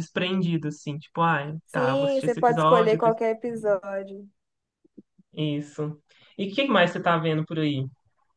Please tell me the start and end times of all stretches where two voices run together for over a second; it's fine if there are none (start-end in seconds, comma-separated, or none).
1.7-3.0